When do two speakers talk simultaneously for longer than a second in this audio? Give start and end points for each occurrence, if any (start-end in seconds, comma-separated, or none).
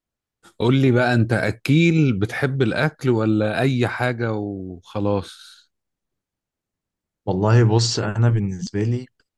none